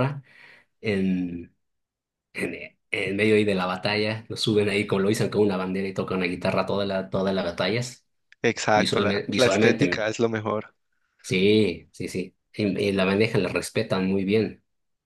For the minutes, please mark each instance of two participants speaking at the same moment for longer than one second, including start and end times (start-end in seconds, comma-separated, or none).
8.7-10.1